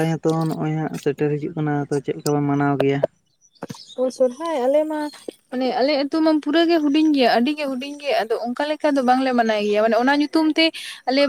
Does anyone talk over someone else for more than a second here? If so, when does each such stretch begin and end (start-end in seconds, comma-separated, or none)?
none